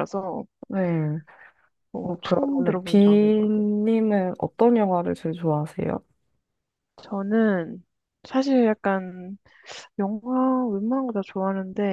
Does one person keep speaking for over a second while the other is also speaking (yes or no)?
yes